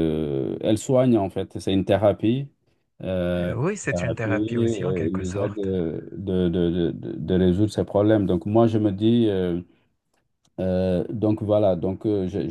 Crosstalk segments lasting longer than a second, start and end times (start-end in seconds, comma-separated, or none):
3.4-5.7